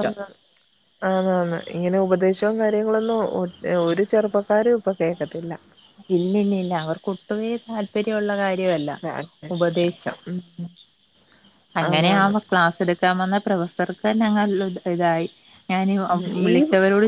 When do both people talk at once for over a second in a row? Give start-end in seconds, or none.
none